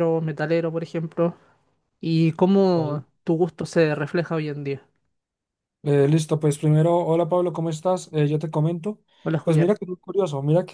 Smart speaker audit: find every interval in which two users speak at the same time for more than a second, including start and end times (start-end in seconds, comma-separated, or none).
none